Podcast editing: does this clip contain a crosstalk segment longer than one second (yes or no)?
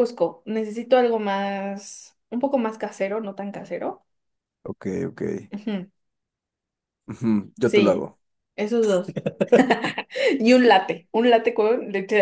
no